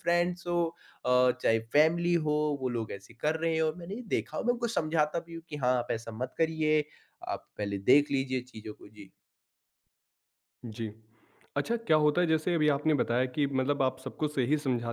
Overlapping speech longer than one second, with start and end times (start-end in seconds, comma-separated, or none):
none